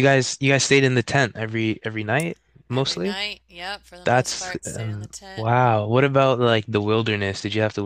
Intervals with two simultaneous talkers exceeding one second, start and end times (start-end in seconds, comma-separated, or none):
4.0-5.5